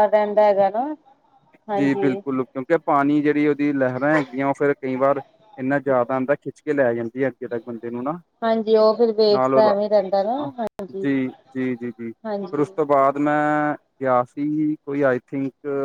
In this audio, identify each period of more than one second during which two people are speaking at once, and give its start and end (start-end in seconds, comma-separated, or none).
none